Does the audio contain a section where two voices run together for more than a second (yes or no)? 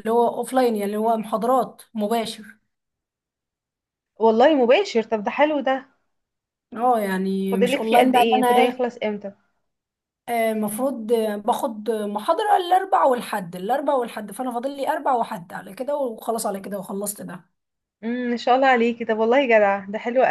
yes